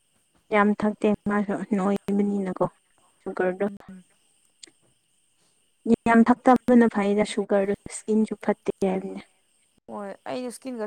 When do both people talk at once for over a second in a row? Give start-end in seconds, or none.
1.1-2.6